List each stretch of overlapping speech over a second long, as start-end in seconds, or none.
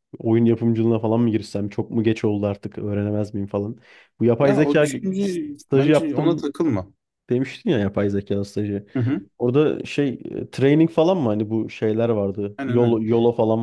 4.4-6.5